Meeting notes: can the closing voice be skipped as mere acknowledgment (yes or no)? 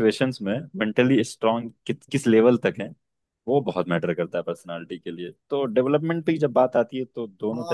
no